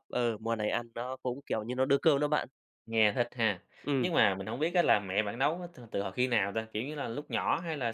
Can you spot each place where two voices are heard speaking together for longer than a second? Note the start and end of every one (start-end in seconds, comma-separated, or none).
none